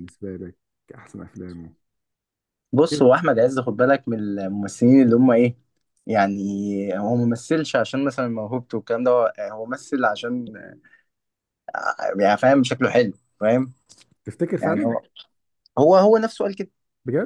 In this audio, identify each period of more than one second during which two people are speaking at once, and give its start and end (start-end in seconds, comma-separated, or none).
none